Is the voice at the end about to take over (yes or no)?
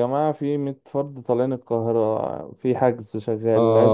yes